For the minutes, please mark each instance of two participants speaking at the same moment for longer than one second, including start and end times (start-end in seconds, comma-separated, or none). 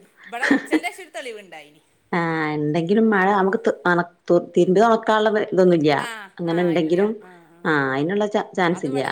none